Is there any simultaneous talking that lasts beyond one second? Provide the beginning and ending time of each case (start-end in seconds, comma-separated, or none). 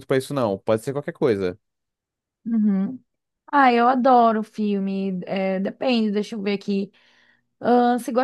none